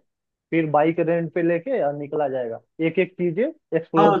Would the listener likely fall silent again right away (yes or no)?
no